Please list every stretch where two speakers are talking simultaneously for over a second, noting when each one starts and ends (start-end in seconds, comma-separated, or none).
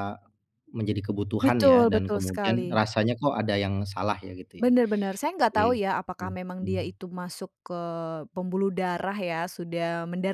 1.4-2.8